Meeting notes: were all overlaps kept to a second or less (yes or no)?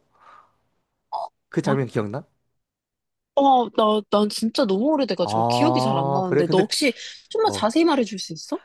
no